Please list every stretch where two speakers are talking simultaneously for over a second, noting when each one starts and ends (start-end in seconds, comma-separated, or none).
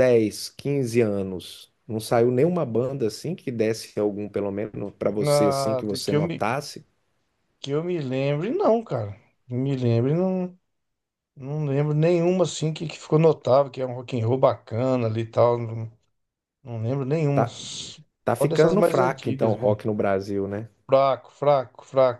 5.2-6.5, 18.2-19.8